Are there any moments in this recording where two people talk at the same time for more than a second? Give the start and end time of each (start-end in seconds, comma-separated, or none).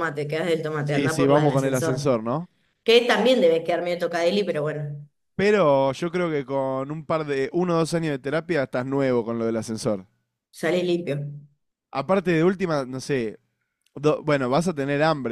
0.8-2.1